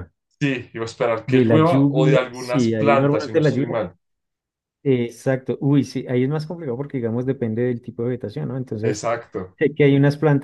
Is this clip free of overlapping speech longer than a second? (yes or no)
no